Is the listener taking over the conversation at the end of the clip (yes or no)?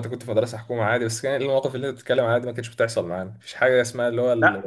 no